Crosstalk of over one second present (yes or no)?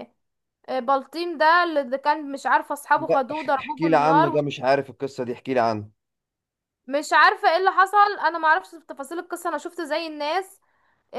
yes